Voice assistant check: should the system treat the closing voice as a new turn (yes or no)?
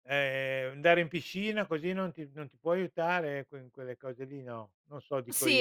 yes